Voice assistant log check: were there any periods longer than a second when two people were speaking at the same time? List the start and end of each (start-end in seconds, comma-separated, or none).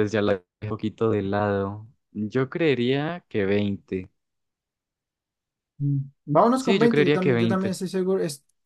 6.5-7.8